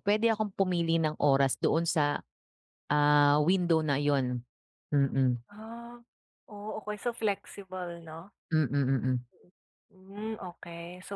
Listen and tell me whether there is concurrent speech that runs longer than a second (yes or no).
no